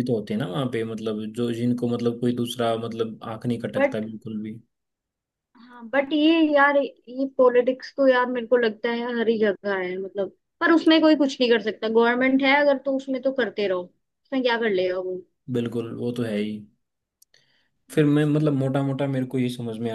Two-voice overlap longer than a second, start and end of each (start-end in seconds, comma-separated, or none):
none